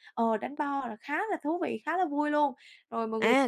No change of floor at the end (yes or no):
no